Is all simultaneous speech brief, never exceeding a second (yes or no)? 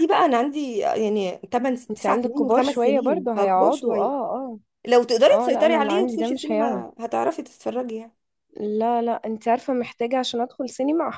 no